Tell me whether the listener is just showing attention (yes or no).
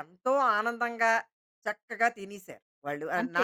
no